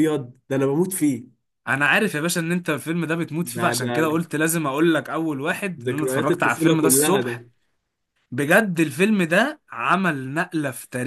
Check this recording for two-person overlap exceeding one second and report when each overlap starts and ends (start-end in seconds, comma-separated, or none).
5.8-7.4